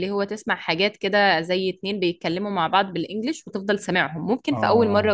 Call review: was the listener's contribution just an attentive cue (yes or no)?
yes